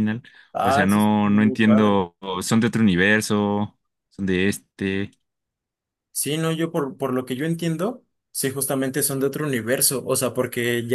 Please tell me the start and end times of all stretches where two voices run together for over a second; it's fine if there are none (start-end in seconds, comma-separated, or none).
0.6-2.0